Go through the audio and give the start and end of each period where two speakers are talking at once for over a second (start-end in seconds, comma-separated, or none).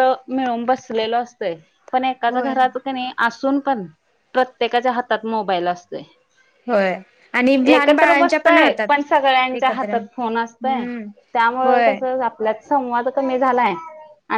7.7-10.8